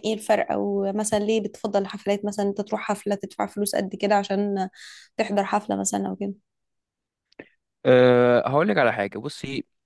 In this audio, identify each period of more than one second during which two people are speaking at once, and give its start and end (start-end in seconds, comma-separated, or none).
none